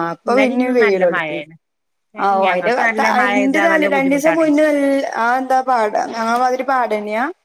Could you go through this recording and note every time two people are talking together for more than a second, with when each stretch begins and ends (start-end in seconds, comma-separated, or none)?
2.5-4.5